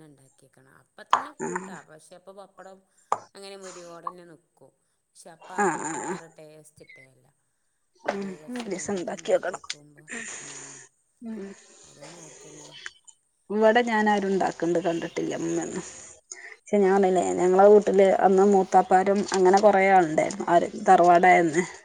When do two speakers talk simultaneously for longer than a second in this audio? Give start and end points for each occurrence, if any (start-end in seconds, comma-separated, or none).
8.1-9.6